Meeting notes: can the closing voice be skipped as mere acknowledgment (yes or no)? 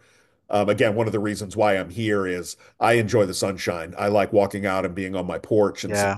no